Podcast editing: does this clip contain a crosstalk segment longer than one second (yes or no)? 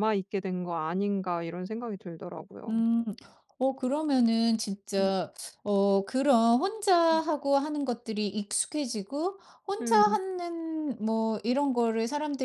no